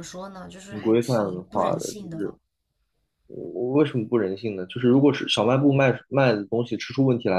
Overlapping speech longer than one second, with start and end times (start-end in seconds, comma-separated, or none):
0.7-2.3